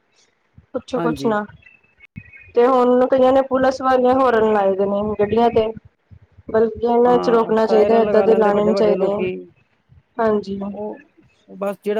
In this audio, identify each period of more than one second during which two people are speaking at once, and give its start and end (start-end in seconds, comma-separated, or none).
7.1-9.2